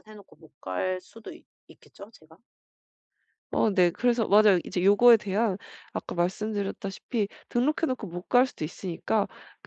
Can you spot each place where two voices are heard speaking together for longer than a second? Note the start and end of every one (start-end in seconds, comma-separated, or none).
none